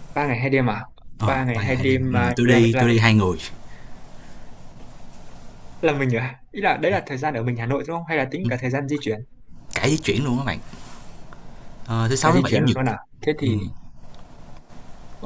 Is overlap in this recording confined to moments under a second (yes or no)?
no